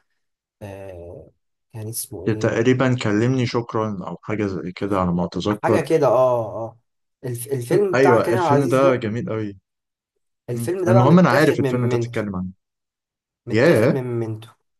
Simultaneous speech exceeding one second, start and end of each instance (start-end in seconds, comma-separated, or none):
7.7-9.1, 10.5-12.2